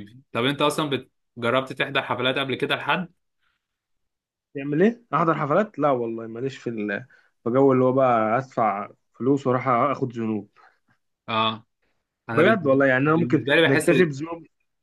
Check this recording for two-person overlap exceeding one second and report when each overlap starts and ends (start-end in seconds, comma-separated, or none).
12.3-13.9